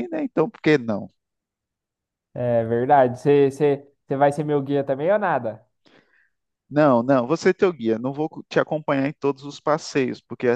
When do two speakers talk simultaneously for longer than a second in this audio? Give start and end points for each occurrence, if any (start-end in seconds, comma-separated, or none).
none